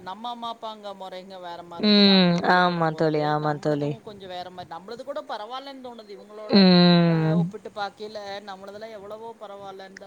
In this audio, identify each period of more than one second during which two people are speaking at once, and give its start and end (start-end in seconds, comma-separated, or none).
1.9-3.9